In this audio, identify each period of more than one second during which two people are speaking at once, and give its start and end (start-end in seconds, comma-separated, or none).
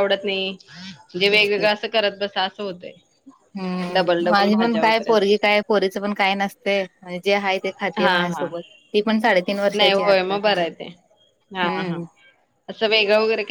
3.9-5.5